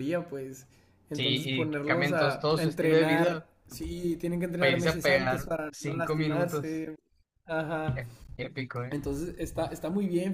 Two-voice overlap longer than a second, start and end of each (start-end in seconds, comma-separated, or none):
1.1-3.5, 4.6-6.8